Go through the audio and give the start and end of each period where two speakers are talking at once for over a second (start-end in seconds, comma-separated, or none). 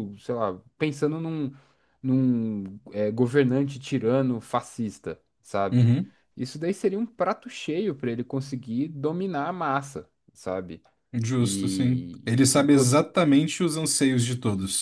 11.4-12.8